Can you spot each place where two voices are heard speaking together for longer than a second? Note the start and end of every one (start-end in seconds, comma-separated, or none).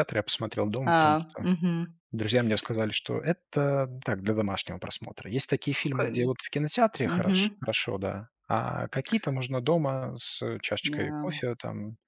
none